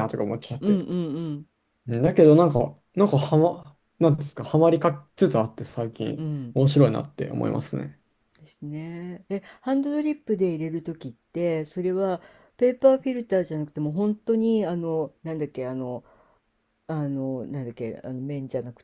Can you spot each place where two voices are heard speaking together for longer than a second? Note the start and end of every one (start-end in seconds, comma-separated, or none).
none